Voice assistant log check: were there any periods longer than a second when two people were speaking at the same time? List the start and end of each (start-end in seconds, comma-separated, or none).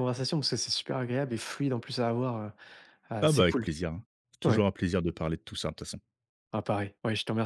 none